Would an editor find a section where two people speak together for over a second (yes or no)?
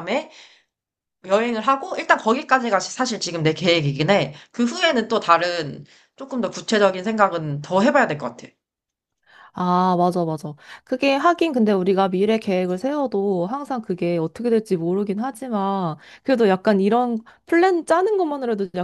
no